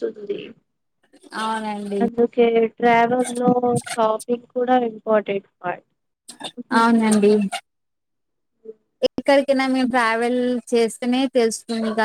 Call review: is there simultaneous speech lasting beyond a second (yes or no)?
no